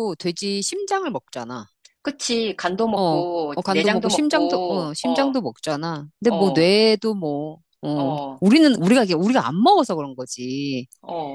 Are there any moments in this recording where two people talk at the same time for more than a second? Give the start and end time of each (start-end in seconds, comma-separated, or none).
2.9-5.4